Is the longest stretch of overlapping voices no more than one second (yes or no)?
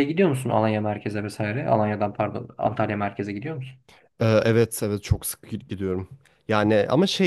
yes